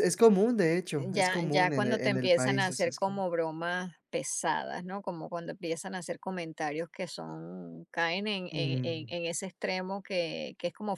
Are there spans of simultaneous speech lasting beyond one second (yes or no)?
yes